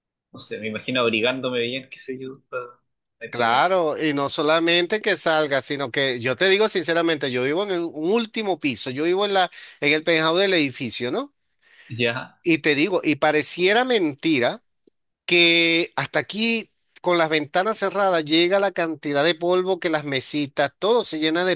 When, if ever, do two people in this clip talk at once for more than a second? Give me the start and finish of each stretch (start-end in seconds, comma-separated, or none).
none